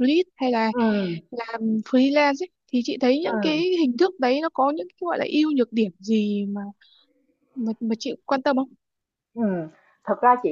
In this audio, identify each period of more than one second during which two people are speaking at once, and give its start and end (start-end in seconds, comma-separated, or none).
none